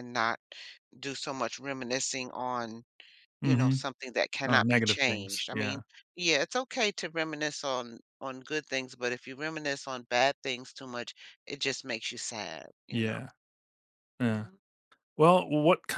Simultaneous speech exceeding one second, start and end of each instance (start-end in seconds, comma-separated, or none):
4.5-5.8